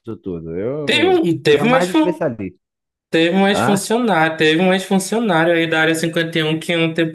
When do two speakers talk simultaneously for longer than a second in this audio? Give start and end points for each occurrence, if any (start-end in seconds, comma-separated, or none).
0.8-2.2